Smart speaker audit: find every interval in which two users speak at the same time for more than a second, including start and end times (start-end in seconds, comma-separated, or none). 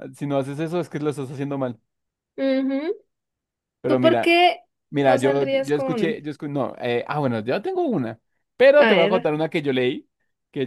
5.0-6.2